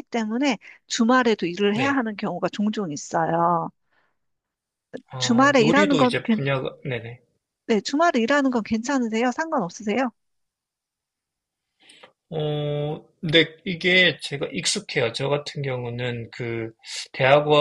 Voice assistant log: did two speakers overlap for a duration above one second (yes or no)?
yes